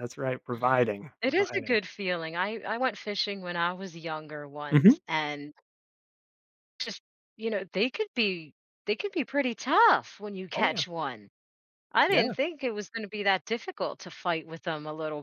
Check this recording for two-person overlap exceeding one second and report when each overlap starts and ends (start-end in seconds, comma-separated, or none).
none